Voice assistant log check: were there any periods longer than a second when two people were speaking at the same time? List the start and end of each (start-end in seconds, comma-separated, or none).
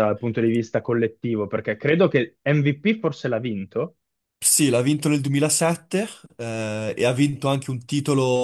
none